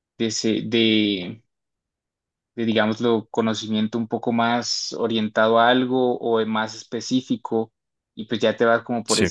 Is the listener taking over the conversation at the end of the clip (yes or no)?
no